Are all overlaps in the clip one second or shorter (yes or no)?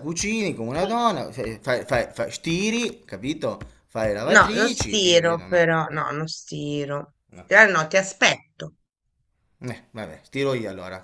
no